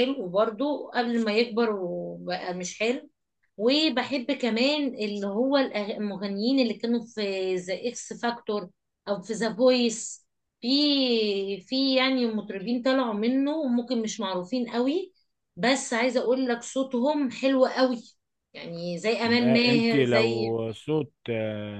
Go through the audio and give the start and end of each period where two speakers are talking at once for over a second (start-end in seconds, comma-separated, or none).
19.2-20.6